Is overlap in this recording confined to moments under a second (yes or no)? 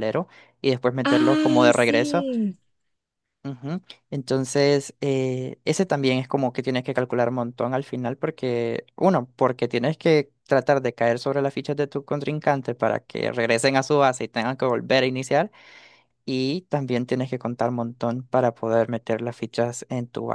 no